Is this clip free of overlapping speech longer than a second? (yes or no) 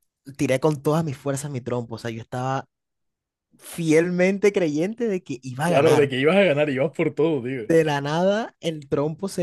yes